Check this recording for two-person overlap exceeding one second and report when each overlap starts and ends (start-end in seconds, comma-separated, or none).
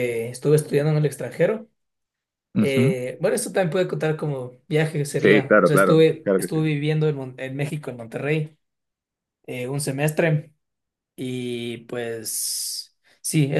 5.2-6.6